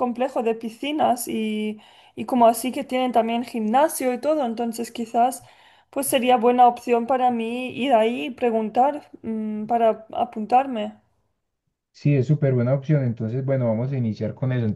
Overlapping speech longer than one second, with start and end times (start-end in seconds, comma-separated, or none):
none